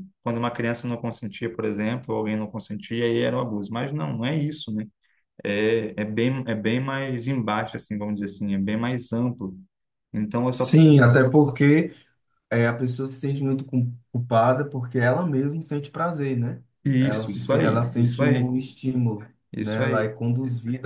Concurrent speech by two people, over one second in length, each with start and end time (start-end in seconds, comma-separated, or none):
17.0-18.5